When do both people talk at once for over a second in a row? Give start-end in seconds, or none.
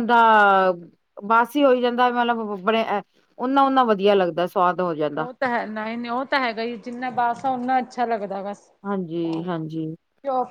none